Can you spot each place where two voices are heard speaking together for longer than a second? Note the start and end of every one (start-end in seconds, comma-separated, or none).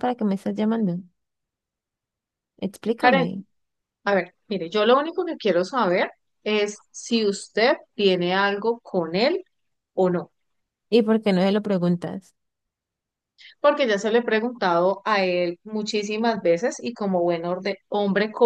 none